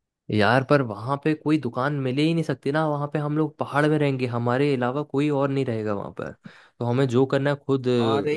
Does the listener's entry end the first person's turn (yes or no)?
no